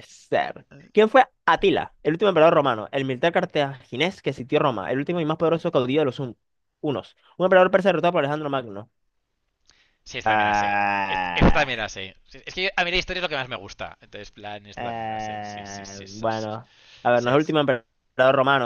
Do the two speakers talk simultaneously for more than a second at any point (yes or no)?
yes